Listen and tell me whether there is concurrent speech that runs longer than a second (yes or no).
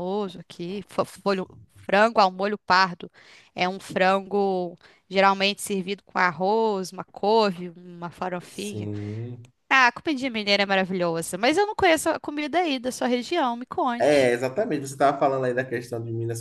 no